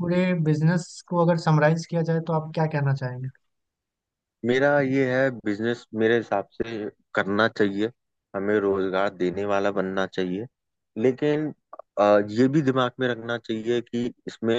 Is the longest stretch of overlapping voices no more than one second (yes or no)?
yes